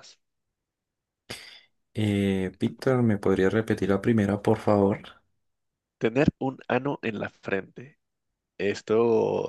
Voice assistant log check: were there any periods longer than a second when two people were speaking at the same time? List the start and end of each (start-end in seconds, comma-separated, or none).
none